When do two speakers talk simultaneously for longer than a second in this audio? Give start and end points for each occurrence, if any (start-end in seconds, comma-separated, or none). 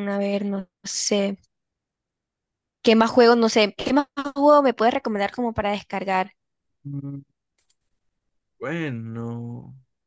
none